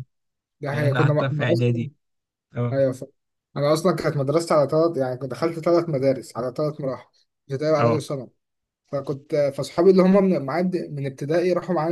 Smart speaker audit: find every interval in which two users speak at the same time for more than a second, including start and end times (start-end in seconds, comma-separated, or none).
0.7-1.9